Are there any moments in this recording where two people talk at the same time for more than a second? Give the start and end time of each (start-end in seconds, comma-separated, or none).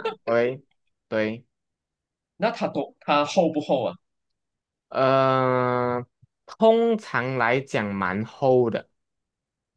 none